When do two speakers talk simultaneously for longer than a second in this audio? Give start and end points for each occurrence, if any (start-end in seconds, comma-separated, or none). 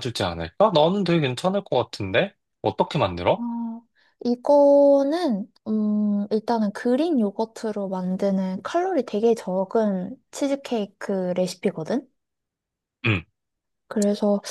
none